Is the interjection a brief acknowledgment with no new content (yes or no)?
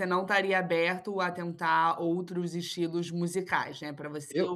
yes